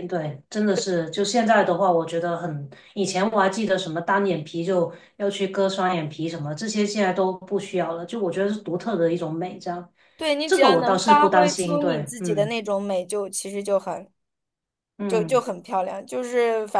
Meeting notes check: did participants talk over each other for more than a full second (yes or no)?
yes